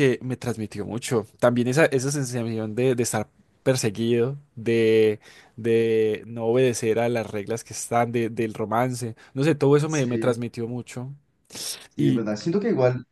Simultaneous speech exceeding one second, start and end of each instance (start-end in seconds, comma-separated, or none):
none